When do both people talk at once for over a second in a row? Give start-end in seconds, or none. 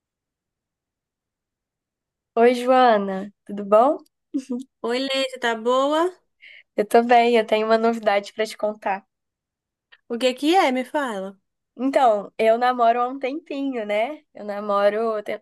none